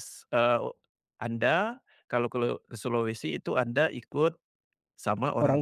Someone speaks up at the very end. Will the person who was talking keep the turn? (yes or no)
yes